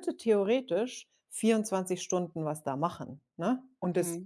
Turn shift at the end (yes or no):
no